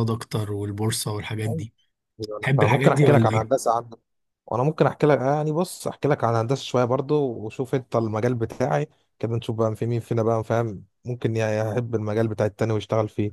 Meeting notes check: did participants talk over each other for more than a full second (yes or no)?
yes